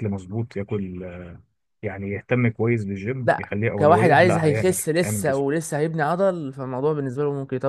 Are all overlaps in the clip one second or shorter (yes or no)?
no